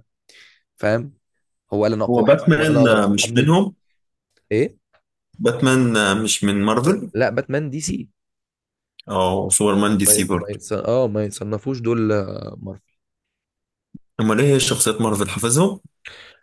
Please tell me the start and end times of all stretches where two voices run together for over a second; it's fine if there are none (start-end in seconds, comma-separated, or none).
2.1-3.5